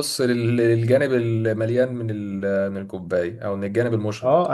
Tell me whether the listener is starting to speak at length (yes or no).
yes